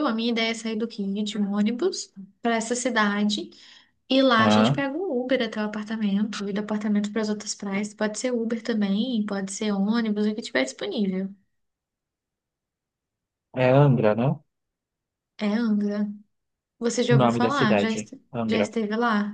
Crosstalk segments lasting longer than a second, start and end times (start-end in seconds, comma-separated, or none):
17.1-18.7